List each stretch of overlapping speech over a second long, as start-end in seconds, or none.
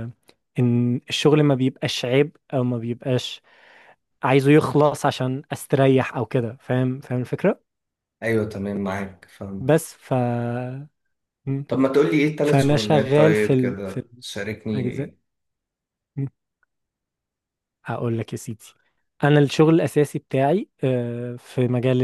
12.4-14.0